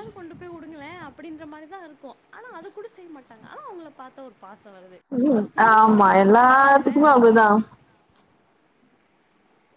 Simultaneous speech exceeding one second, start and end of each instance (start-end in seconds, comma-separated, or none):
5.6-7.2